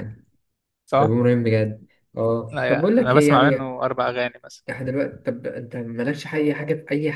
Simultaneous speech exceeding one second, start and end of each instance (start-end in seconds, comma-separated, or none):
2.5-3.8